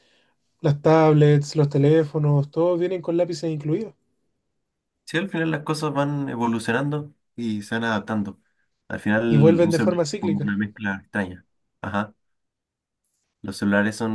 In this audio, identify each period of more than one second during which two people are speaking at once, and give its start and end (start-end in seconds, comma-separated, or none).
9.3-10.5